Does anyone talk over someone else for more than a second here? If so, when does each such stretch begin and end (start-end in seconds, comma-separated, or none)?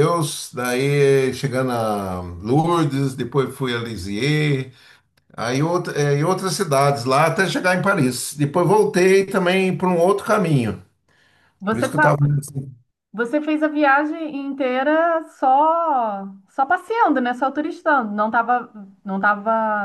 none